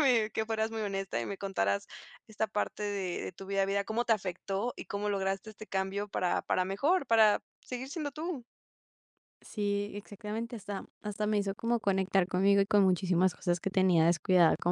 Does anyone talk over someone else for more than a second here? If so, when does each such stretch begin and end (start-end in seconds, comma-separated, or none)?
none